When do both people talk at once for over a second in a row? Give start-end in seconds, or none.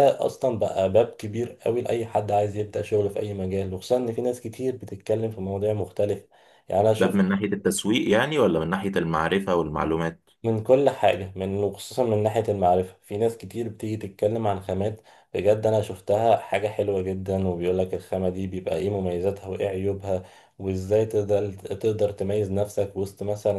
none